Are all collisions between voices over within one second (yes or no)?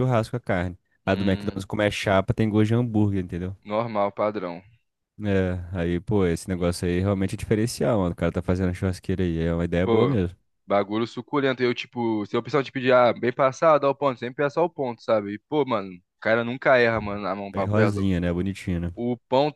yes